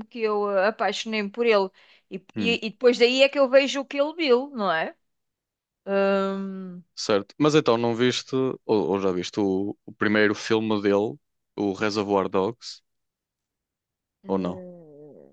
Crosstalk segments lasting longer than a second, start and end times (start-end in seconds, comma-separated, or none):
none